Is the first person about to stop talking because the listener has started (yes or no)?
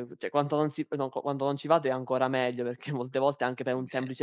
no